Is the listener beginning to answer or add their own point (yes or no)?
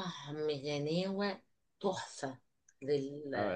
yes